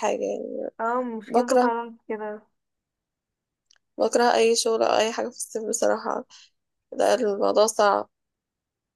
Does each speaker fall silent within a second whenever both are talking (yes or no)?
yes